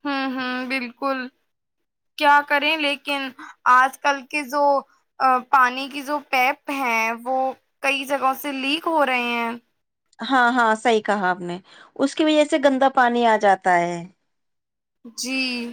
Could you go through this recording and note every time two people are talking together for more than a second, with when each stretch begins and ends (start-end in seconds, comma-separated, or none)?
none